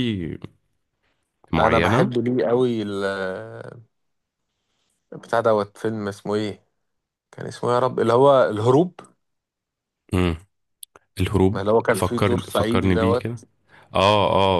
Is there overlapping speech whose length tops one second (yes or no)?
yes